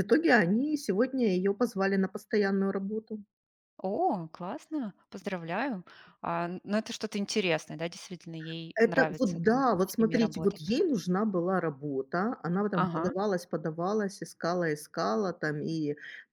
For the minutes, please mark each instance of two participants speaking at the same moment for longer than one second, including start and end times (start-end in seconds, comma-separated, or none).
8.7-10.7